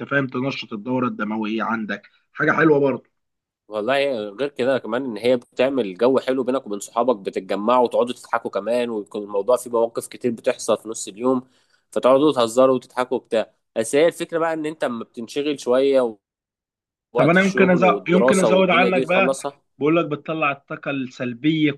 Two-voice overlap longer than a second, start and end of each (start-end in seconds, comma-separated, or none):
17.2-19.4